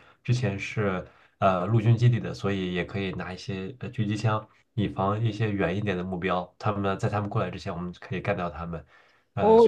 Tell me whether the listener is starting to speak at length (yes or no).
yes